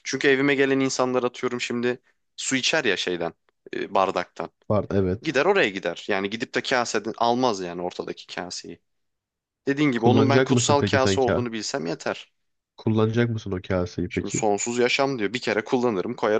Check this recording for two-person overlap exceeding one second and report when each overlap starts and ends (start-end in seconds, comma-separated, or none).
10.0-11.5